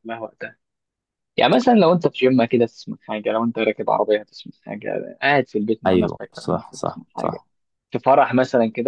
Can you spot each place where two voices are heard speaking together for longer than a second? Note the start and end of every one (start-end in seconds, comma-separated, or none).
5.8-7.4